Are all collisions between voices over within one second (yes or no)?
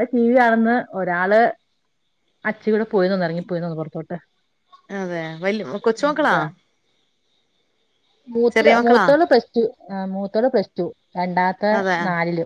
yes